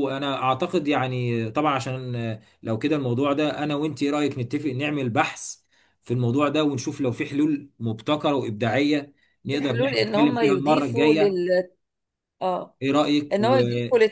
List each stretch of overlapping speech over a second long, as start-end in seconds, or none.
9.5-11.4